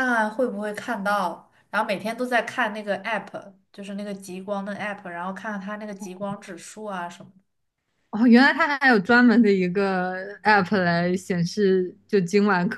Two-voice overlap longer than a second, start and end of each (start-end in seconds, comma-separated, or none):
none